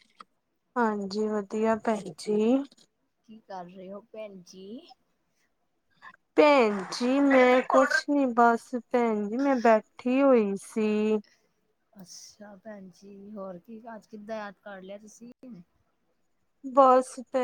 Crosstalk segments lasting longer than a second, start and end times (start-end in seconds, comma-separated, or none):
none